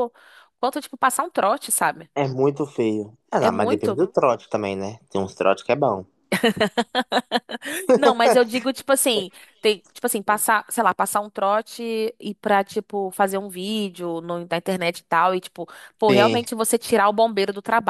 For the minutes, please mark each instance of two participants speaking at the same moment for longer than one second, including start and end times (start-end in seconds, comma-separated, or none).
none